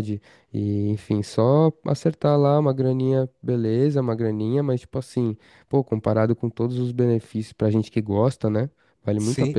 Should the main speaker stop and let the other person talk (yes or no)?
yes